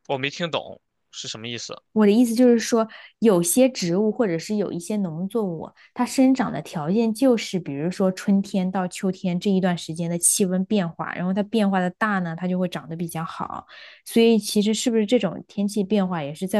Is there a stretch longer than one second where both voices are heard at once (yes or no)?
no